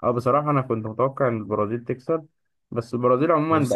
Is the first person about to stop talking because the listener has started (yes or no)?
no